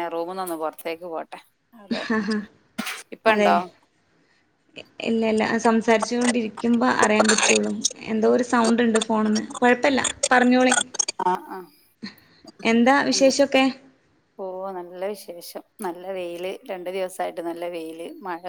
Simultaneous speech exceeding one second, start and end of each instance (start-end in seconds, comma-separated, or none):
none